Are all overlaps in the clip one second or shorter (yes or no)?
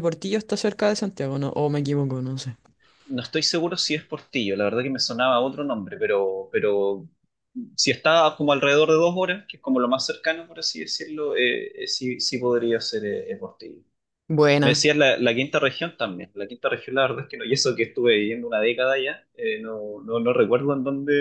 yes